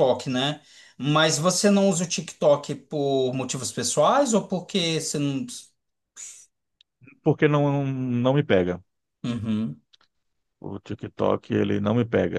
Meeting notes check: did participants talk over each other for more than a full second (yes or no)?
no